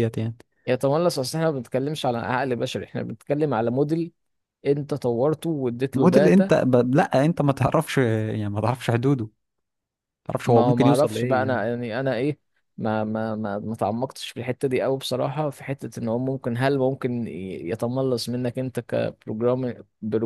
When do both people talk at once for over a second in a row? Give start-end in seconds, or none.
10.4-11.7